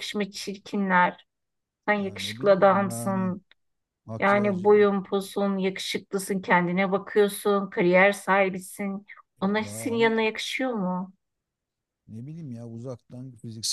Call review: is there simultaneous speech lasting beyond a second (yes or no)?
yes